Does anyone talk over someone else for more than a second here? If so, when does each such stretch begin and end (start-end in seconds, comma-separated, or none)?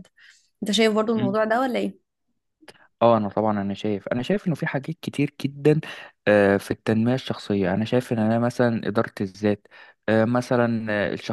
none